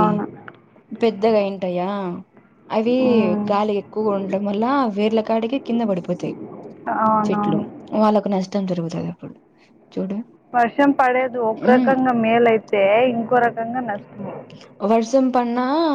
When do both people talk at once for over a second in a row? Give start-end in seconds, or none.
none